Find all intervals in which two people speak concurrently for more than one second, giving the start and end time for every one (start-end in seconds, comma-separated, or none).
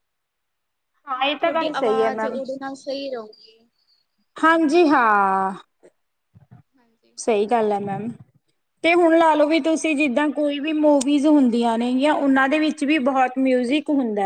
1.2-2.4